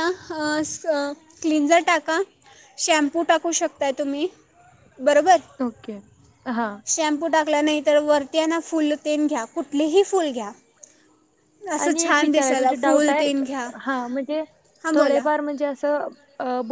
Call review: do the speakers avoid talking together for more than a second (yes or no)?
no